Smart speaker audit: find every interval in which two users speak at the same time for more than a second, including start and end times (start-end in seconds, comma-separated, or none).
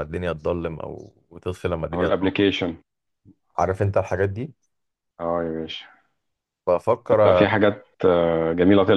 none